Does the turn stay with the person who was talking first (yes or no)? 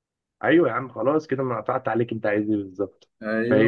yes